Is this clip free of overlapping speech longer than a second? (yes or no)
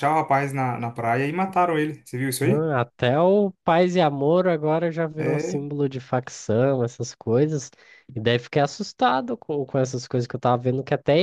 yes